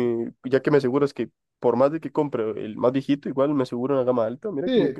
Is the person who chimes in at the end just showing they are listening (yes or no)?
no